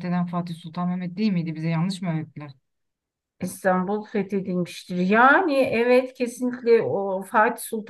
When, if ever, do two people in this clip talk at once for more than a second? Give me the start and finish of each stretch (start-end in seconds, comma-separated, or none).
none